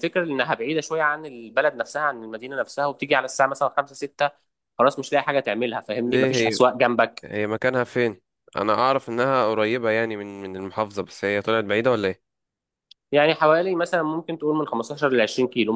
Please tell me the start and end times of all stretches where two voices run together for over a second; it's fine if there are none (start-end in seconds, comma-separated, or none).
none